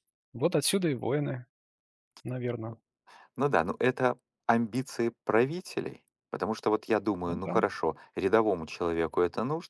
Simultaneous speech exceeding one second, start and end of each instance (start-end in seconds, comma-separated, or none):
none